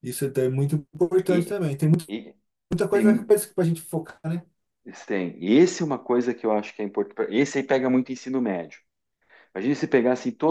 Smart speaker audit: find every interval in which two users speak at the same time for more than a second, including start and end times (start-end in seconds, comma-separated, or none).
none